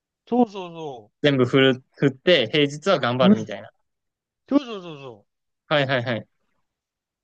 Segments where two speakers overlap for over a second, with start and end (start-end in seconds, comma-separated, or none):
none